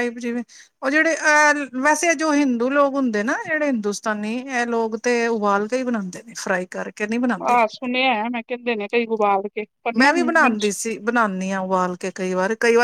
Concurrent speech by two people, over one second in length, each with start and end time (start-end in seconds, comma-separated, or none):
none